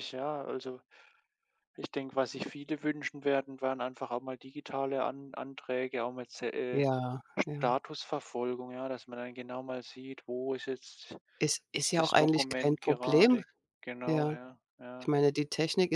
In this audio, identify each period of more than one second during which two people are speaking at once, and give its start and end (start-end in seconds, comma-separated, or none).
11.9-13.4